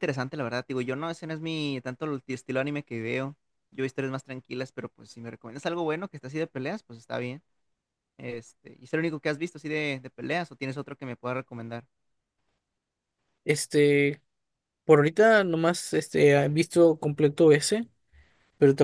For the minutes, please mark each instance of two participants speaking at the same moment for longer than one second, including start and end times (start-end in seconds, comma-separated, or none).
none